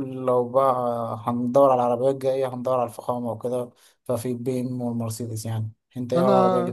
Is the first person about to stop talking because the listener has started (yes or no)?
yes